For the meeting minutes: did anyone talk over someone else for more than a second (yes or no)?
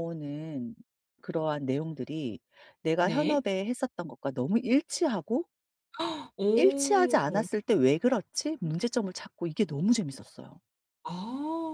no